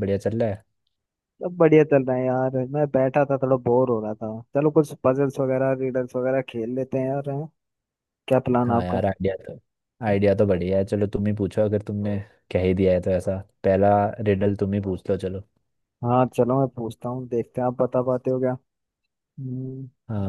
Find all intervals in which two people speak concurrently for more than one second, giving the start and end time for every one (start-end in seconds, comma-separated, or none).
none